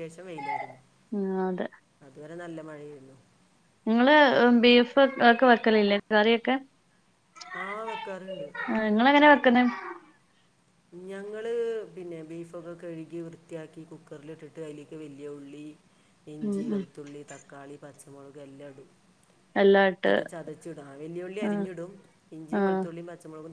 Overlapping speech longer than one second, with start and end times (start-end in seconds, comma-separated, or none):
none